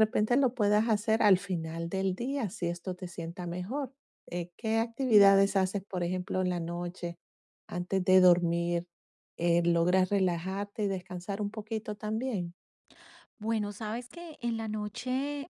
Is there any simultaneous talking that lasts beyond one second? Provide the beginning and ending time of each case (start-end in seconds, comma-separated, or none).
none